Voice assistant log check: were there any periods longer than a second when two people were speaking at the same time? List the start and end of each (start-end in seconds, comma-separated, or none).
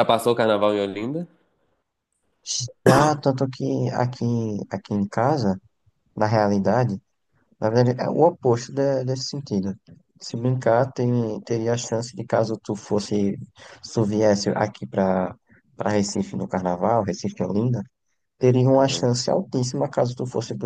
none